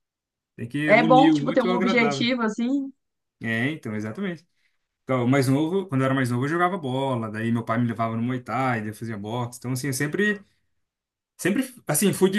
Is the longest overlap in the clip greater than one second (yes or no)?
yes